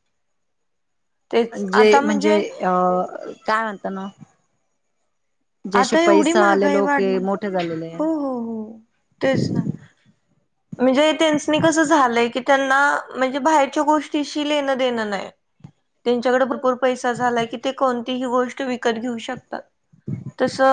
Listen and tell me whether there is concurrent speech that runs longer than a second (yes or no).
yes